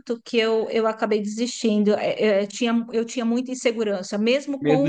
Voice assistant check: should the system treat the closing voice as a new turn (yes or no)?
yes